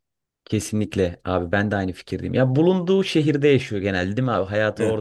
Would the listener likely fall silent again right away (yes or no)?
no